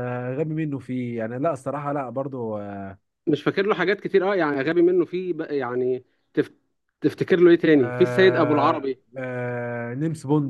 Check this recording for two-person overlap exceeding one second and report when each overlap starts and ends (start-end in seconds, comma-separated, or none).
7.7-9.0